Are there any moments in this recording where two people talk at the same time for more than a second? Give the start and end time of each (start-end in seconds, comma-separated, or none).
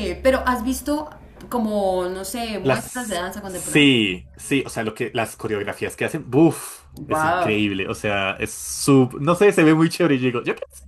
2.6-3.9